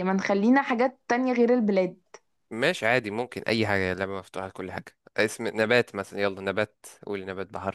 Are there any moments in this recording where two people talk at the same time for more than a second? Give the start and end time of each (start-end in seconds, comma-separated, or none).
none